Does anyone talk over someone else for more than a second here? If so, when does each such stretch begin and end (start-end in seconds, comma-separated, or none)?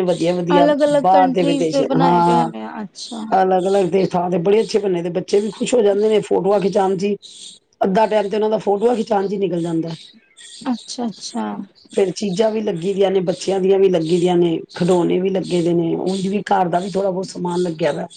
0.6-2.5